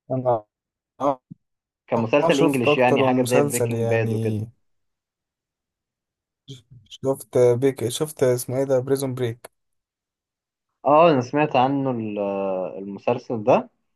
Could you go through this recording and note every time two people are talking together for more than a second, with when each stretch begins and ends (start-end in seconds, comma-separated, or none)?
2.2-4.4